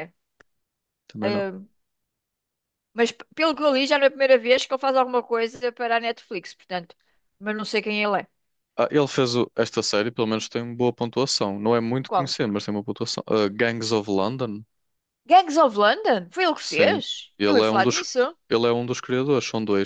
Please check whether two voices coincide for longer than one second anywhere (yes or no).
yes